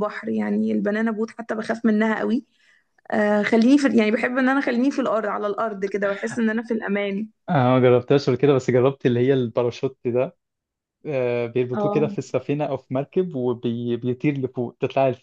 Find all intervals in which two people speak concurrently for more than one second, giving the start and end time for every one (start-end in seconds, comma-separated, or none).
none